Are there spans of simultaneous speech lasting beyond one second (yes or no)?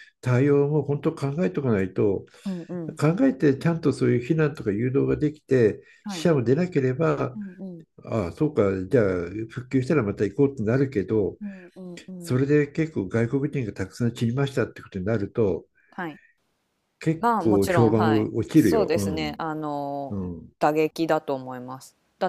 yes